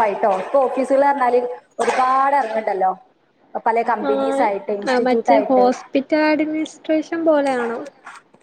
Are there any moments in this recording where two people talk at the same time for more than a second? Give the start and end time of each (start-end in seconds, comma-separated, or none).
none